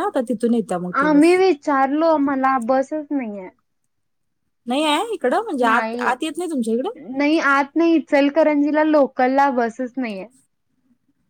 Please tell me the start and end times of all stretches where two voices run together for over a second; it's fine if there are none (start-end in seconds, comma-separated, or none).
none